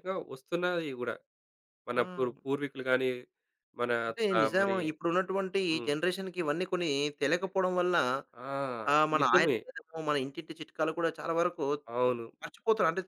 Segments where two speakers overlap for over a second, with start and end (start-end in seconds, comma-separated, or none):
none